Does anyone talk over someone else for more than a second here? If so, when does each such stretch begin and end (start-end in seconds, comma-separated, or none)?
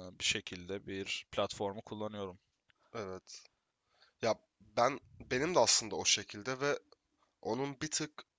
none